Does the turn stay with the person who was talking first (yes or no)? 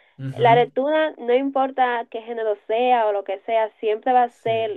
yes